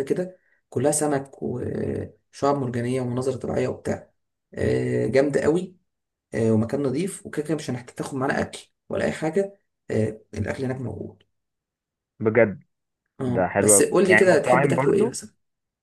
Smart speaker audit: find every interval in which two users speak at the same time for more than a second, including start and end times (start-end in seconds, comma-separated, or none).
13.3-15.2